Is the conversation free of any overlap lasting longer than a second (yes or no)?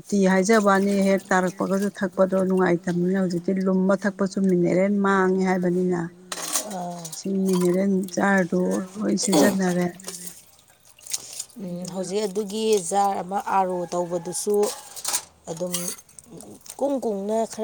yes